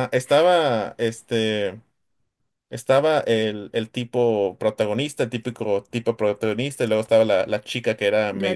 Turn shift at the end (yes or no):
no